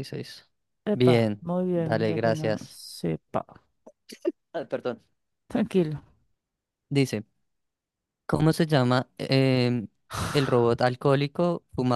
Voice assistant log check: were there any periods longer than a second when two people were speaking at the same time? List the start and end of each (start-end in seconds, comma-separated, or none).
0.9-2.8